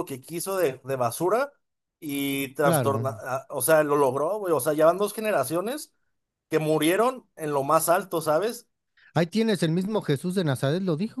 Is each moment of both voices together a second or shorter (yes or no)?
yes